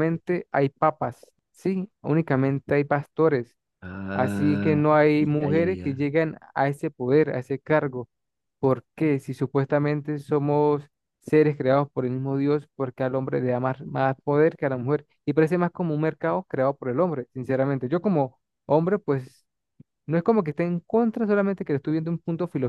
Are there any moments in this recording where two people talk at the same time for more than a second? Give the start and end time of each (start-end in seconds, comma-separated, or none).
4.1-6.1